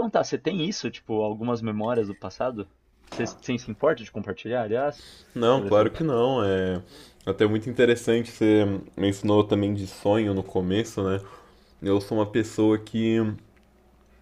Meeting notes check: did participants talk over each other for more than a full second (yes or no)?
no